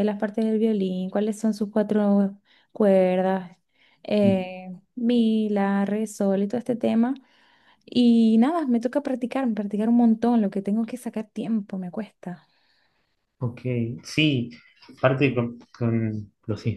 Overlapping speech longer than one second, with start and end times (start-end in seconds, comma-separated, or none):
none